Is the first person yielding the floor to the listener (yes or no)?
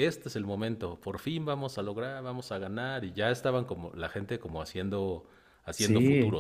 yes